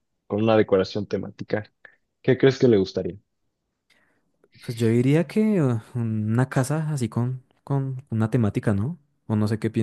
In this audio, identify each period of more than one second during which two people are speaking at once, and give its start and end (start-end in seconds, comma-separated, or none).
none